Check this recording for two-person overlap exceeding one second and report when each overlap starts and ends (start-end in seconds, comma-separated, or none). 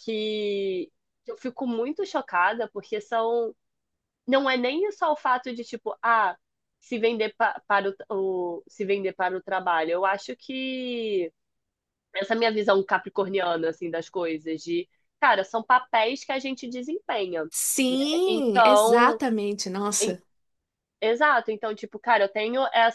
17.9-19.2